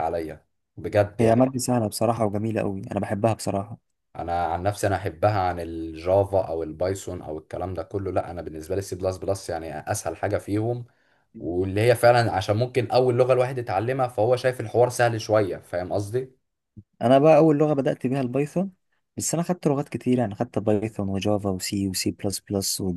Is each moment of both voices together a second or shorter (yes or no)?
yes